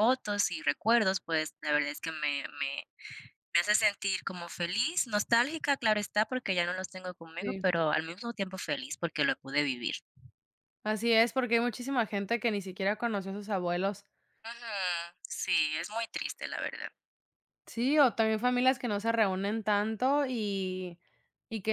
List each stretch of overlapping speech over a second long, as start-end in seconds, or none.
none